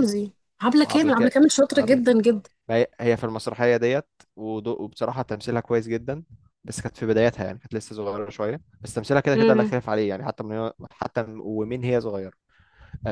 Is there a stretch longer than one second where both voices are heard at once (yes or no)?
yes